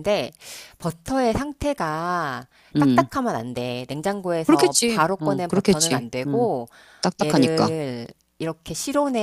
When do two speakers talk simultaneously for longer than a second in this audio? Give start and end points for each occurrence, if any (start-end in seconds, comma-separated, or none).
4.4-6.5